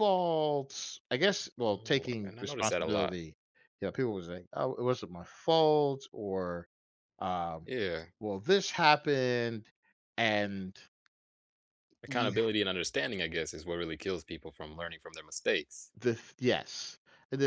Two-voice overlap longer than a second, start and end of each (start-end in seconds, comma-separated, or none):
1.6-3.2